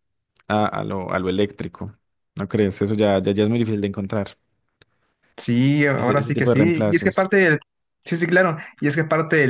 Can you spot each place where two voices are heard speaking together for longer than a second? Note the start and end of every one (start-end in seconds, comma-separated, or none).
6.0-7.3